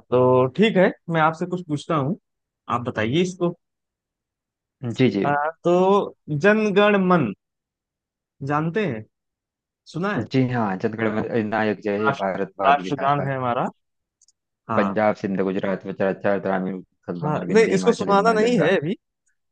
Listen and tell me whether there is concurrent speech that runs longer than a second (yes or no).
yes